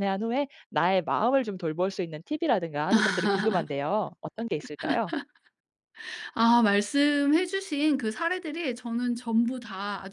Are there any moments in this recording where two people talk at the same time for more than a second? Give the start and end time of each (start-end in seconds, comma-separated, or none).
none